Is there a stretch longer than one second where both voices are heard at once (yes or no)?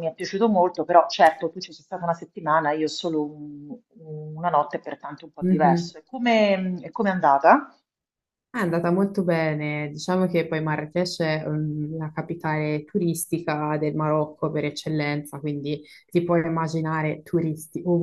no